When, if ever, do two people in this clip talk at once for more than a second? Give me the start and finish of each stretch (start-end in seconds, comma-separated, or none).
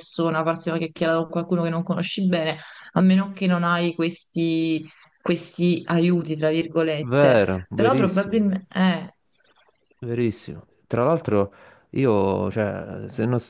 7.0-8.5